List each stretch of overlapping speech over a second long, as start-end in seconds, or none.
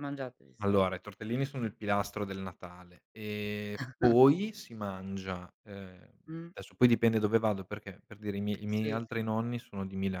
none